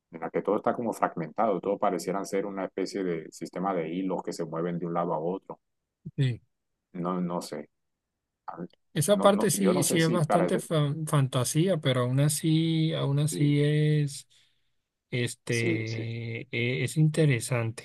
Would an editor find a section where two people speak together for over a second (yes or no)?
yes